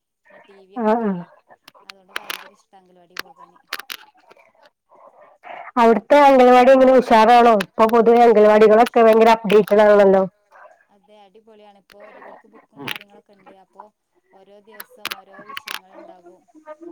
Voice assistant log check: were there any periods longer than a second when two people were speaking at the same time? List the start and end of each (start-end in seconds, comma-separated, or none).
none